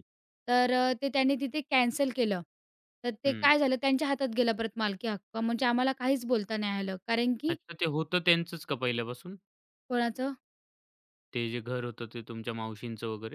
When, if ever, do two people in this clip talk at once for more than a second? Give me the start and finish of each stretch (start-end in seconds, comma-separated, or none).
none